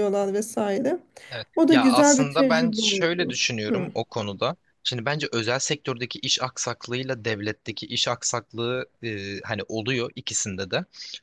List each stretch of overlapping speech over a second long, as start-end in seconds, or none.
1.6-3.9